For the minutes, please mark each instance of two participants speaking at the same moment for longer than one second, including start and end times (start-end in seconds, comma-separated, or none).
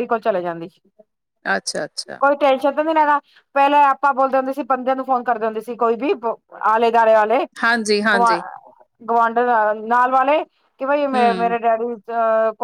none